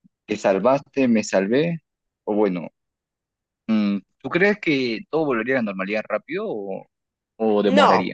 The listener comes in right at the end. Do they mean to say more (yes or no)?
yes